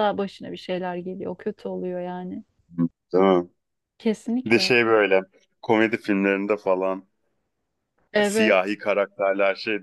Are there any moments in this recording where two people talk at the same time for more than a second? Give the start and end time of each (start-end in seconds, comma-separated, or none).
none